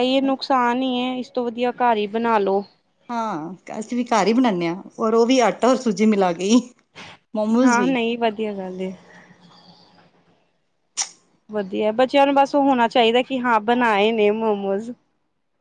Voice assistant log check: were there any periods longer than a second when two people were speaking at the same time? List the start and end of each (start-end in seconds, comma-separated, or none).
none